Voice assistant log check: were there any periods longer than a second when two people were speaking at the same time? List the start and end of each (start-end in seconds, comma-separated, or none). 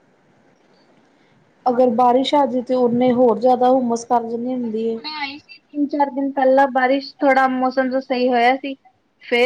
none